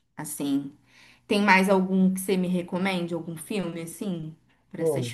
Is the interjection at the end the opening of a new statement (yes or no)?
yes